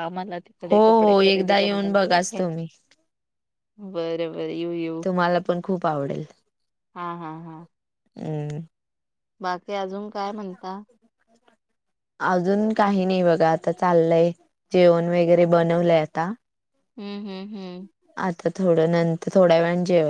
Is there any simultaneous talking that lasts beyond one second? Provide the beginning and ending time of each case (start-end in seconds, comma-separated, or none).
0.7-2.4